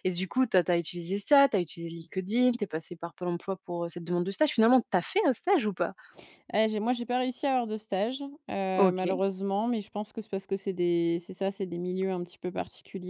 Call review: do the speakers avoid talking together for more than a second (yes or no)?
yes